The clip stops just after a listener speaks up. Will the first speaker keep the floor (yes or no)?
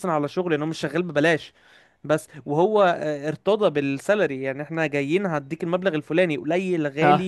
yes